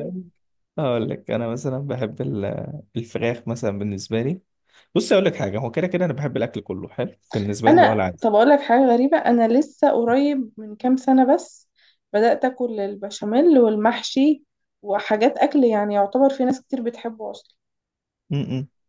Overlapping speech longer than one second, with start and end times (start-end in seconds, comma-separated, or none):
none